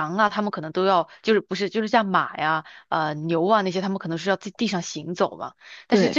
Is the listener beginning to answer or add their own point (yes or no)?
no